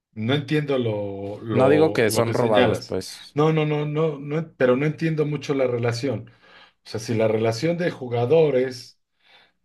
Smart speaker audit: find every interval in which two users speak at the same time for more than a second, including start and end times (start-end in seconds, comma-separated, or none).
1.5-3.4